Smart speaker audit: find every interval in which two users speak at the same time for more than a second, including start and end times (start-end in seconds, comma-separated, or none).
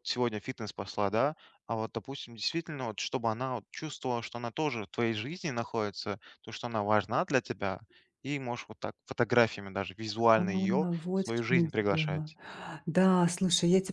10.3-12.3